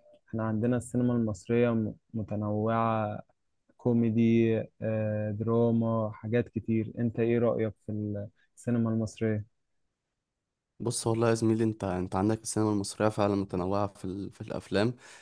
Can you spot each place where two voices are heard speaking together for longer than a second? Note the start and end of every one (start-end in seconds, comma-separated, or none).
none